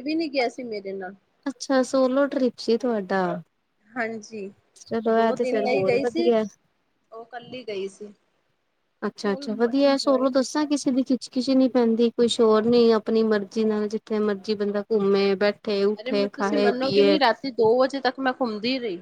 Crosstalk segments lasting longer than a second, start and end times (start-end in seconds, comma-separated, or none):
9.2-10.7